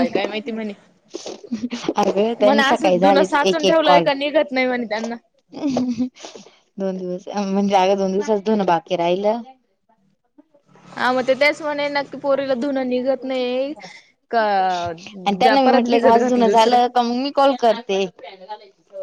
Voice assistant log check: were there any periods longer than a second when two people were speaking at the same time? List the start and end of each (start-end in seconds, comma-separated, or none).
2.4-4.1, 15.2-16.8